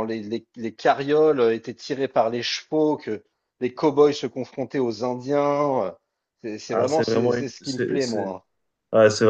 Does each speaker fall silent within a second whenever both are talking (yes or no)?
no